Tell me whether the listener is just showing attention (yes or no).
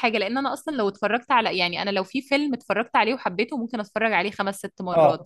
no